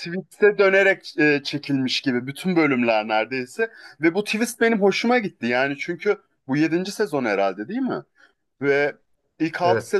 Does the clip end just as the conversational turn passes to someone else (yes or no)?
no